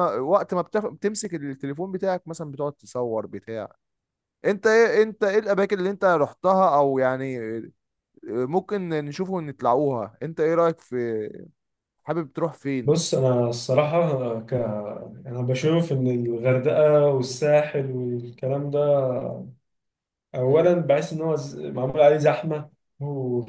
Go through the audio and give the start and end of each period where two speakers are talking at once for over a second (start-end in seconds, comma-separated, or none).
none